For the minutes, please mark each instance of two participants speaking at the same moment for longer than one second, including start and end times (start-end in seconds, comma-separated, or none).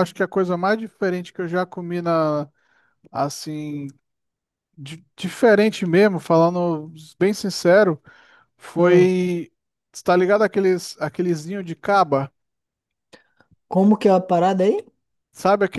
none